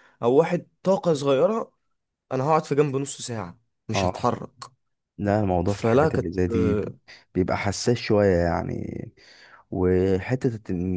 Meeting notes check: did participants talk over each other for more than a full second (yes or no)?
yes